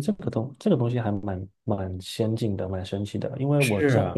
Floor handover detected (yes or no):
no